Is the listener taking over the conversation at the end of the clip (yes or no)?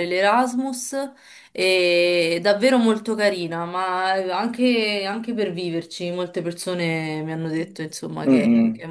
yes